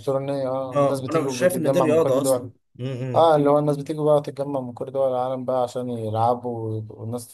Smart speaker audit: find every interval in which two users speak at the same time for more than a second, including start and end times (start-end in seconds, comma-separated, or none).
0.8-2.5